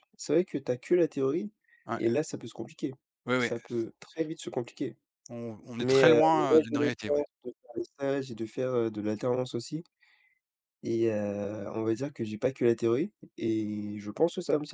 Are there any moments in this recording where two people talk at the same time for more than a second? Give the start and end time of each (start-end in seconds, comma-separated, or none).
5.8-7.2